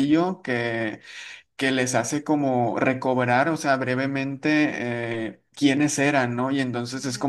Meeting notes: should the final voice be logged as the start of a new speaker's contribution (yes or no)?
no